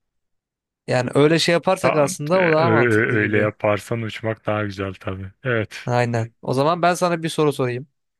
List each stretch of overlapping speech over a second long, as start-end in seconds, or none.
1.8-3.5